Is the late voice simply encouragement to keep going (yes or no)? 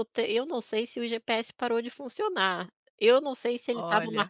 yes